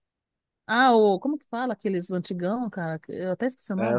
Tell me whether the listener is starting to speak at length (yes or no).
yes